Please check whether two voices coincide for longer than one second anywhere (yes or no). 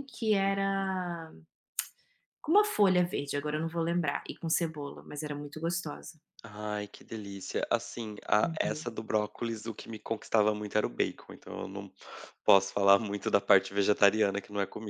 no